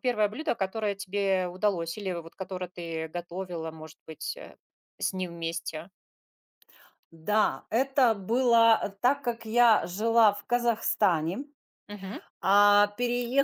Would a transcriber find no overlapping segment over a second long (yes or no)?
yes